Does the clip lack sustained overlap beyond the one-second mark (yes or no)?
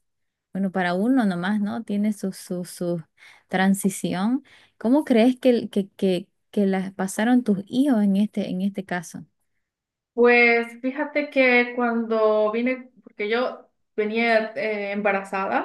yes